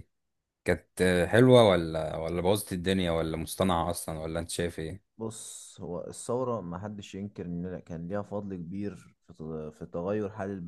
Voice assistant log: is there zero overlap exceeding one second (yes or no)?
yes